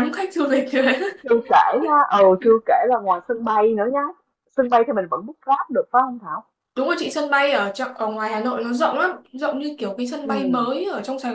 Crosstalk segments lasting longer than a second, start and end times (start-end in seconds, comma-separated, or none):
none